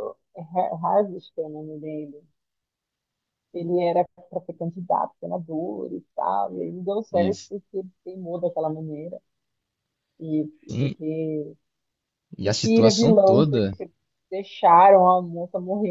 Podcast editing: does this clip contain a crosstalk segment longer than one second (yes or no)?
yes